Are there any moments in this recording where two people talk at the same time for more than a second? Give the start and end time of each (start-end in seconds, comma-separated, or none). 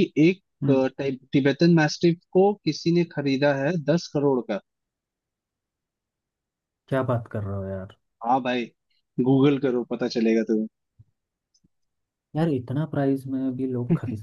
none